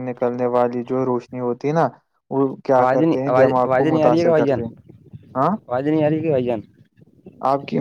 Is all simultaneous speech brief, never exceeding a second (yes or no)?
no